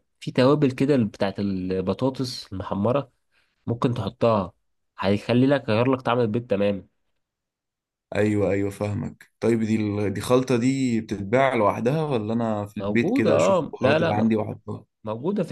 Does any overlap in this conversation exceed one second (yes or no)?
yes